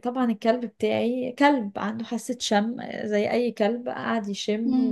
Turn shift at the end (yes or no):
no